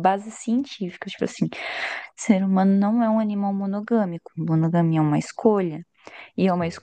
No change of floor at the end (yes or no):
yes